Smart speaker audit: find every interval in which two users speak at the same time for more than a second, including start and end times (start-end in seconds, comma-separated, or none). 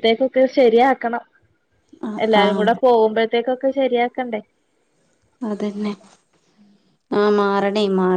none